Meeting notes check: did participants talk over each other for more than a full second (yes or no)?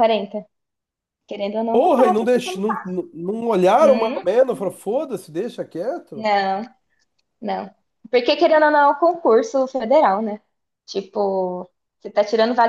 yes